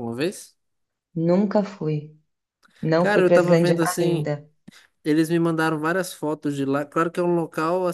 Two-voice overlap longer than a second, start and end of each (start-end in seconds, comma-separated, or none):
3.0-4.3